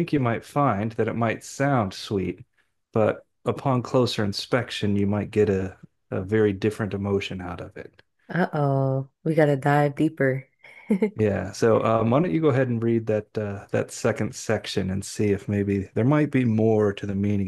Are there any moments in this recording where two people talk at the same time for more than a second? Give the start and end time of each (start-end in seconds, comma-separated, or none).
none